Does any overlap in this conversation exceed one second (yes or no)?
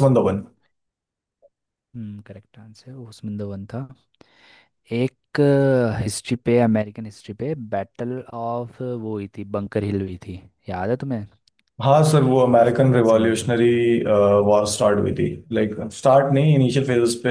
yes